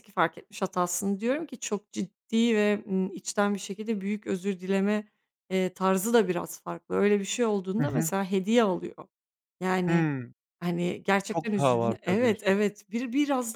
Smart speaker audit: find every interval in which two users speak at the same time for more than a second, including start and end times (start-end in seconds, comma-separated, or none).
11.3-12.6